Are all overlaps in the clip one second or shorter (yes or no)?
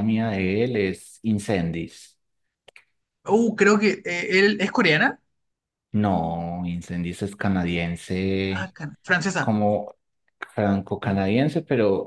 yes